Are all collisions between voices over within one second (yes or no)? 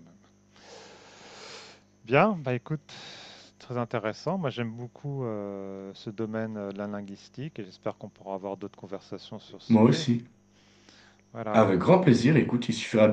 yes